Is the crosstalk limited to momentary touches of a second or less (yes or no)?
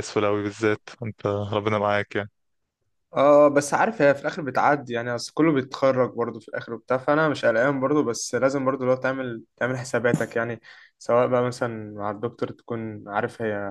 yes